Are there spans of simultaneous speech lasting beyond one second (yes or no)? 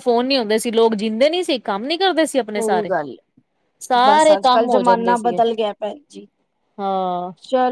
yes